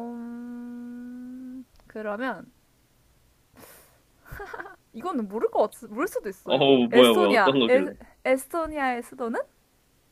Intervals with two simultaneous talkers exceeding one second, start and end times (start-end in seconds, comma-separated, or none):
6.4-7.9